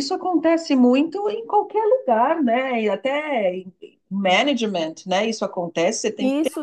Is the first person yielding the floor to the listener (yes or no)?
yes